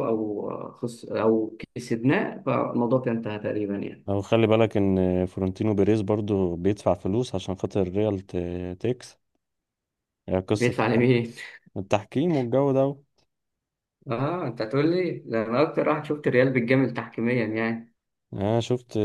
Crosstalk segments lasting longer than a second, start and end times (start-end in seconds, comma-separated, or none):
none